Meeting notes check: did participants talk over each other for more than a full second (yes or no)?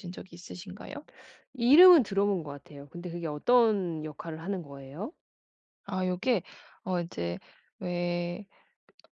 no